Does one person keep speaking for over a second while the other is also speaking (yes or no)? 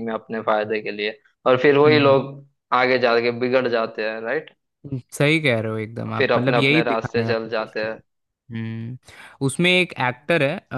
yes